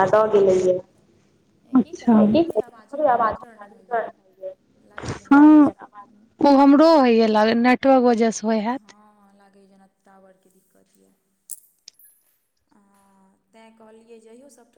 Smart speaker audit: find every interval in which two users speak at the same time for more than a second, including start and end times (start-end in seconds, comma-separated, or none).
none